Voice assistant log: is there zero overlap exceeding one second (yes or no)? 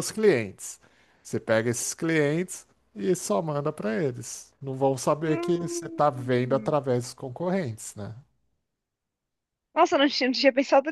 no